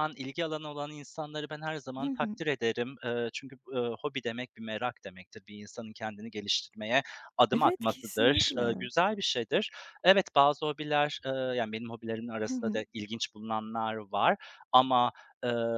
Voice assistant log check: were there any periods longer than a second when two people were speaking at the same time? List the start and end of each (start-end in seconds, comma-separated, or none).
7.5-8.9